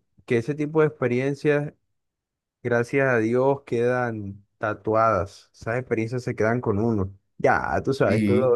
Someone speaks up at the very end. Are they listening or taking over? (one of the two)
listening